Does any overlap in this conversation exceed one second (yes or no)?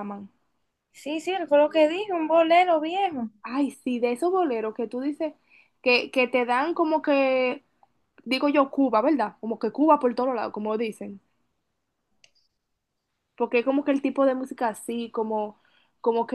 no